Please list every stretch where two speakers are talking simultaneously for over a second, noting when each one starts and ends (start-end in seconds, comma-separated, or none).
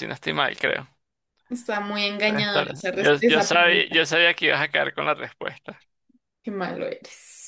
2.2-4.0